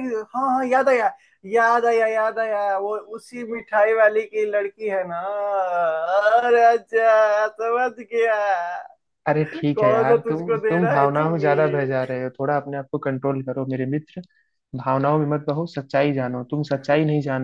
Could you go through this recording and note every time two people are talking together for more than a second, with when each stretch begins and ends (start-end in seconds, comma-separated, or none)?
9.8-11.5